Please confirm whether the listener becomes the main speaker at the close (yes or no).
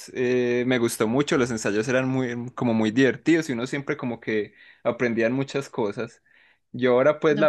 no